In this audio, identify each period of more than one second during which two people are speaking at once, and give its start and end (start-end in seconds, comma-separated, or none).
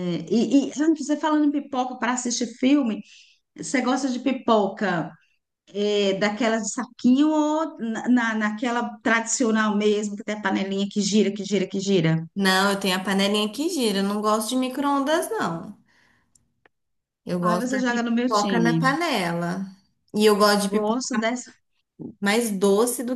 17.4-19.0